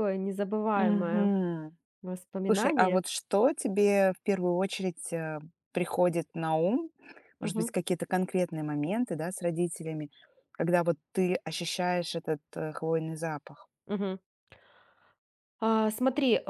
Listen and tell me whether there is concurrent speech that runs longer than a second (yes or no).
no